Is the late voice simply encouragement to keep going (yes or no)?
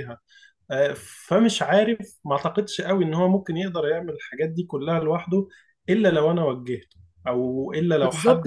no